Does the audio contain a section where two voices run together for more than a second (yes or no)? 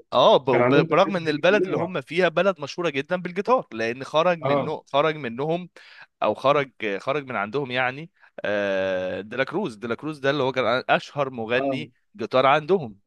yes